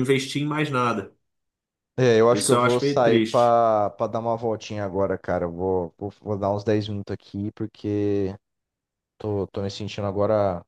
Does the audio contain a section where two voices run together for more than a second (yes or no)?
yes